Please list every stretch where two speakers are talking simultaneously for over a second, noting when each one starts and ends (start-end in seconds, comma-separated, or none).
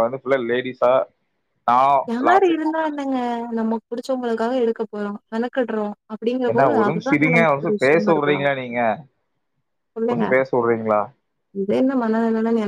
6.5-8.4